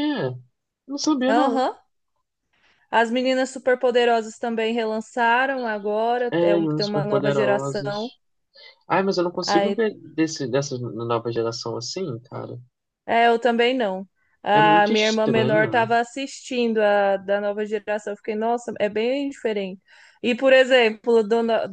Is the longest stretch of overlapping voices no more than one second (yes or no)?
no